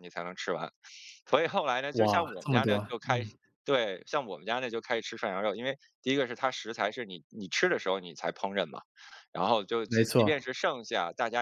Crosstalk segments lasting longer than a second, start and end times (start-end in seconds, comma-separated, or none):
1.9-3.3